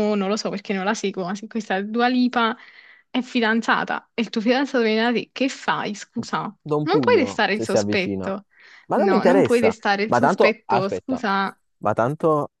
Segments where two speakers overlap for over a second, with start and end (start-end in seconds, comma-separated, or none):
6.8-8.3, 8.9-11.2